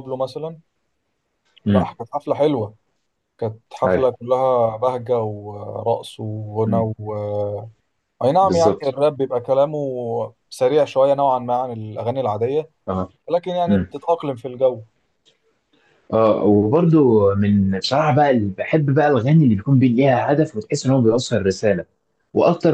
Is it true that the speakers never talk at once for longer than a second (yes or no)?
yes